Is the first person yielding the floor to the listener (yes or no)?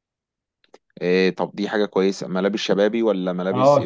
yes